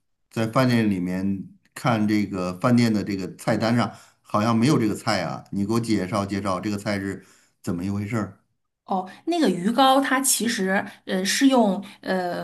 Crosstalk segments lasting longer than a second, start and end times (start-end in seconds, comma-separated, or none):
none